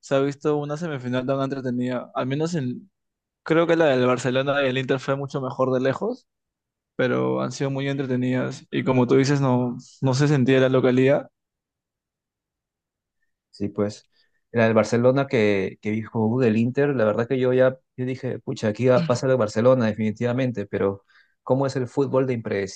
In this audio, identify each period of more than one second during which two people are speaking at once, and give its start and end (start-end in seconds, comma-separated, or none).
none